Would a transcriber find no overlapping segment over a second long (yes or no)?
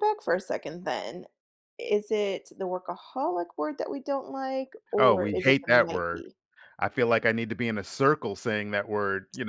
no